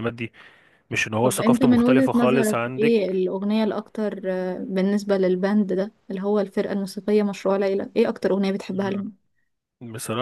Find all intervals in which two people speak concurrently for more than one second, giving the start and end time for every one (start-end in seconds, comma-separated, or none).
1.2-3.3